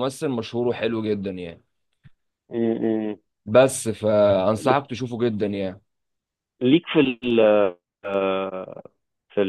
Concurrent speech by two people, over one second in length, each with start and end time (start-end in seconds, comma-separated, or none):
none